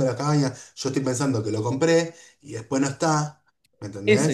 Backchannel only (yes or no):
no